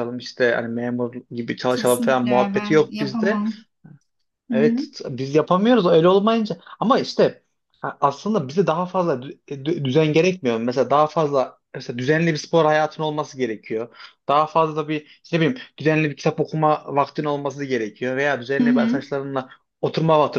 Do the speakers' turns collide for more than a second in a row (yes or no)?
yes